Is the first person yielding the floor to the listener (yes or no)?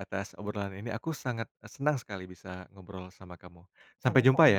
yes